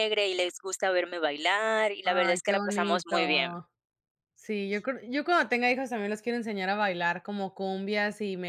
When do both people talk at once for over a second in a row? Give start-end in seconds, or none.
2.0-3.5